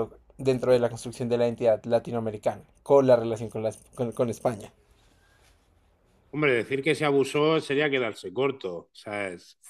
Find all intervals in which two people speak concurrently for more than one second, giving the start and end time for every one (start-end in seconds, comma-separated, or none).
none